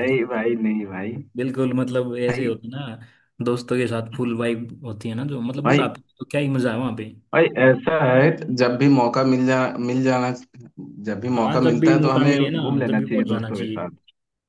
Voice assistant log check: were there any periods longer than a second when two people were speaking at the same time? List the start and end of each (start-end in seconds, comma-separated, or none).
11.3-13.9